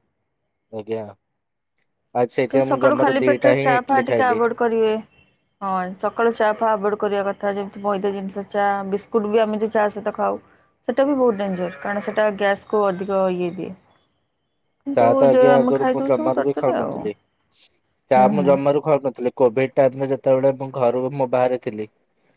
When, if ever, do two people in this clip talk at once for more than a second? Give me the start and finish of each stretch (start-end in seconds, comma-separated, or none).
2.5-4.4